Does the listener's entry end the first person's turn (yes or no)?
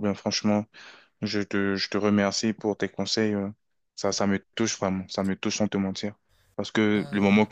no